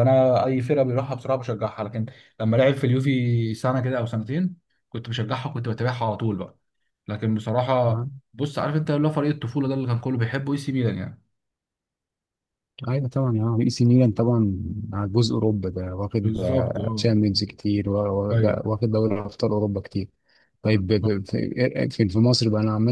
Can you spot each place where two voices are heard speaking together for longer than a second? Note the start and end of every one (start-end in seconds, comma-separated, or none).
none